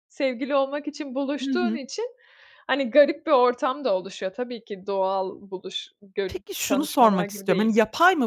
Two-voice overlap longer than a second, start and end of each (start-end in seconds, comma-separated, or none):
6.3-7.7